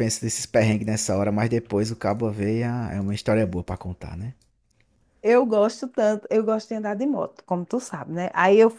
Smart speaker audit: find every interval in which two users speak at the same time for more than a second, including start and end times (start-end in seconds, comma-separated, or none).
none